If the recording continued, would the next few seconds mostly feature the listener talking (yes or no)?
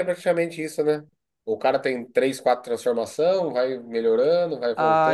yes